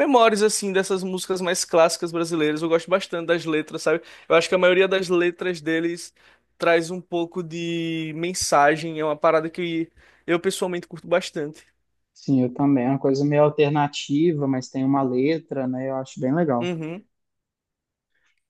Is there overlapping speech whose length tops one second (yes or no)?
no